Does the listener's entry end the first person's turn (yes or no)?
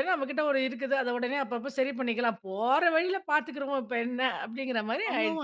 yes